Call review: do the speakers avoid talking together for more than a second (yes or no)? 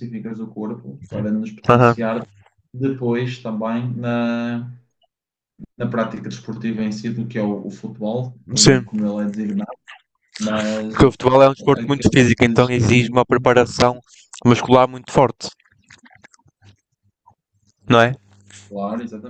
no